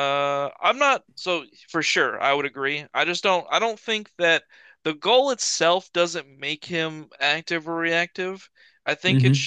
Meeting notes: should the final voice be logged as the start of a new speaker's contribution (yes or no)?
no